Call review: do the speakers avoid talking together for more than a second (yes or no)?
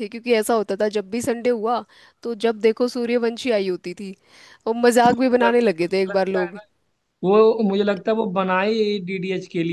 no